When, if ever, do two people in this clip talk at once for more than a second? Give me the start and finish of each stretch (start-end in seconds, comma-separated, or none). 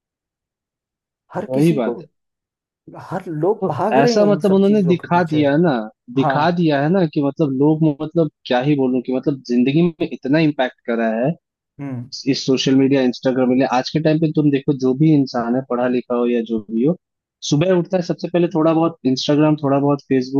3.6-5.4